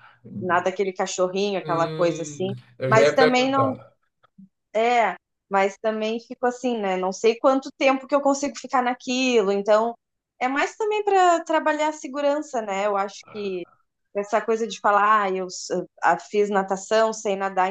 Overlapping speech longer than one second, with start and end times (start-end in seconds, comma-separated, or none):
1.6-3.8